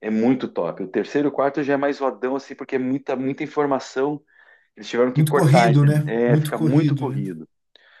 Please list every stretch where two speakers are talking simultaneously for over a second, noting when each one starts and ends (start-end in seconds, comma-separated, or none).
5.1-7.2